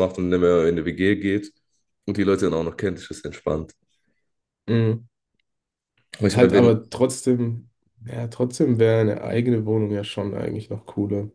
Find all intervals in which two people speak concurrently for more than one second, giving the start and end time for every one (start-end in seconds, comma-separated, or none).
none